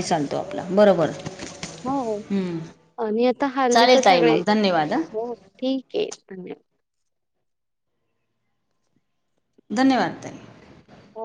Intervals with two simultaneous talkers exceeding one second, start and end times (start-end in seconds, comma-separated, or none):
3.7-5.0